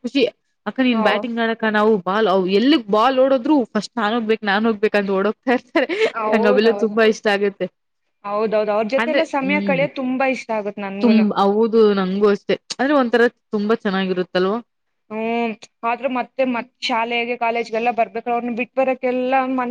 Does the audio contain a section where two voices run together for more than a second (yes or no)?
no